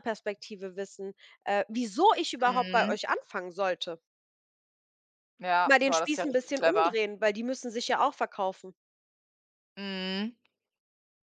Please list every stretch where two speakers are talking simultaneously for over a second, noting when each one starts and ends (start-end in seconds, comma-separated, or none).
5.6-7.0